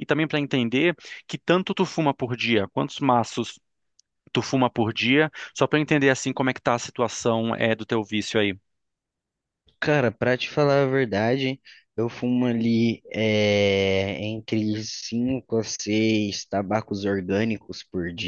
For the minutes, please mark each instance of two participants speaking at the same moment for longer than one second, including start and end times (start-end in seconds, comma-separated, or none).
none